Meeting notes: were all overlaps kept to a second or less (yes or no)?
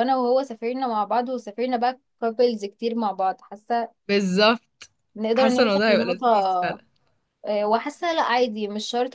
no